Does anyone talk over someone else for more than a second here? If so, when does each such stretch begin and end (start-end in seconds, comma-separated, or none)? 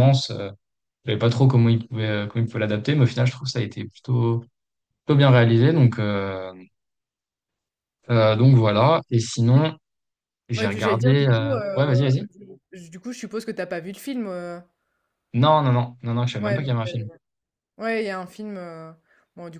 10.5-12.1